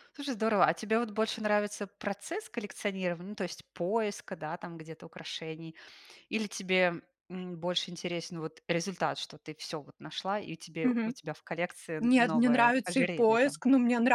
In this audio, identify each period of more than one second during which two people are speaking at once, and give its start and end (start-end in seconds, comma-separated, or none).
12.0-13.6